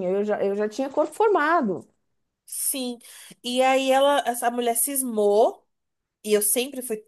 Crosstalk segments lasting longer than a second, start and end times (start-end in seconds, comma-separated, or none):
none